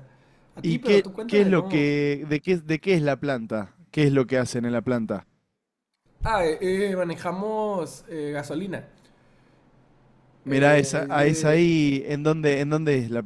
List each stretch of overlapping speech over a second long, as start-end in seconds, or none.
0.6-1.9, 10.5-11.7